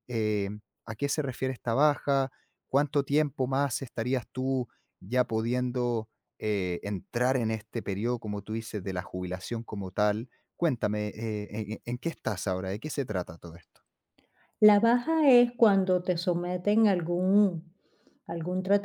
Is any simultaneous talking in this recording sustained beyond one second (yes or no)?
no